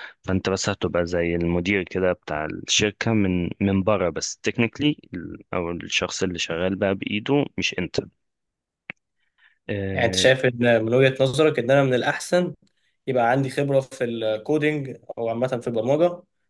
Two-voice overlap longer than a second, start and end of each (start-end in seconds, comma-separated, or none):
none